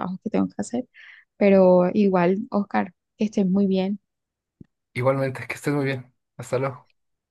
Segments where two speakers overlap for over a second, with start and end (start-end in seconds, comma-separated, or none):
none